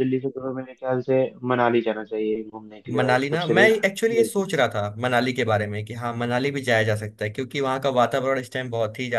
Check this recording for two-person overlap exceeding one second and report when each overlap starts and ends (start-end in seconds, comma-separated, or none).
3.0-4.5